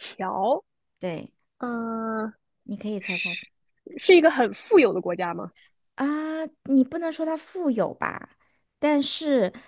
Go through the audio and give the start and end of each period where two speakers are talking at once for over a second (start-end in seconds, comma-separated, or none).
none